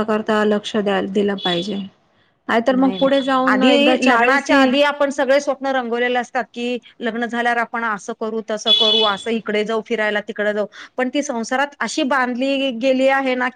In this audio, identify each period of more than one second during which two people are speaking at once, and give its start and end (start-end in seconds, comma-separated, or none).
2.8-4.7